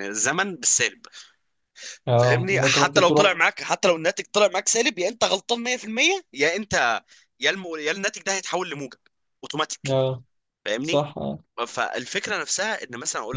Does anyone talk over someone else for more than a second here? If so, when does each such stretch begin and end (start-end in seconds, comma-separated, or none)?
2.1-3.4